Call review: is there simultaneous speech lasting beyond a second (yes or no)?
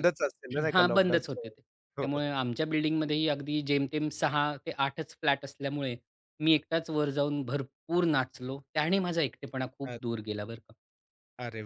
yes